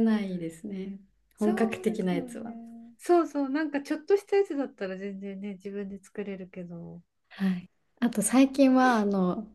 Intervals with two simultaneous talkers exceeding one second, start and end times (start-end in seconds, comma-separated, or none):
1.4-2.6